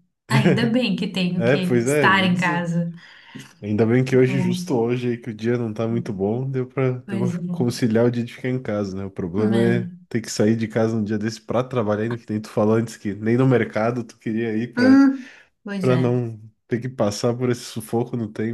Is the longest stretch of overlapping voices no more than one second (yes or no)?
no